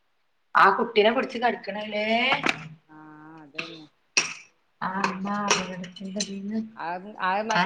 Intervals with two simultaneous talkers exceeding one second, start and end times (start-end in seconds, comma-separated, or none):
none